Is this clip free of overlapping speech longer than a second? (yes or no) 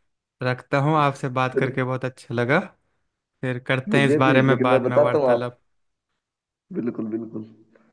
no